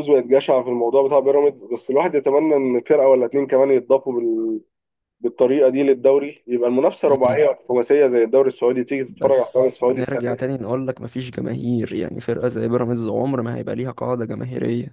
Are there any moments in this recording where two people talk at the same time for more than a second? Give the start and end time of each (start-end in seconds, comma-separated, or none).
9.1-10.5